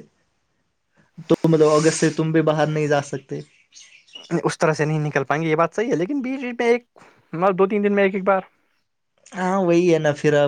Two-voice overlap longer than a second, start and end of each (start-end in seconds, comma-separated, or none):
none